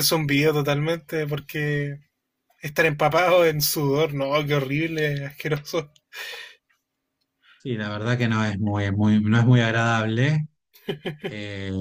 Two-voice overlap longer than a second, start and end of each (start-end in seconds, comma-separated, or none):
none